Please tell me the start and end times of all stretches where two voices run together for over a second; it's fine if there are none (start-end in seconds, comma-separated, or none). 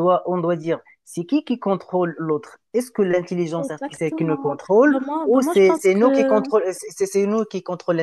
3.6-6.4